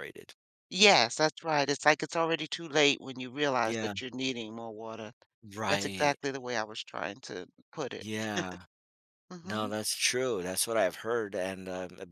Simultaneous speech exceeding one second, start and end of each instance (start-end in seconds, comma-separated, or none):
none